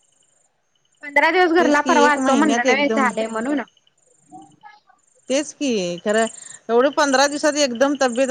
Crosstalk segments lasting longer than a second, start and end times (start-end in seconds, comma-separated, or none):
1.6-3.1